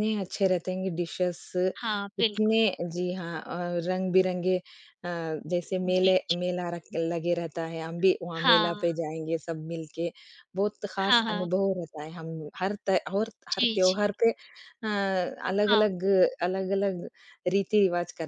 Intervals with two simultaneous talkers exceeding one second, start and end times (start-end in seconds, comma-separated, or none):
none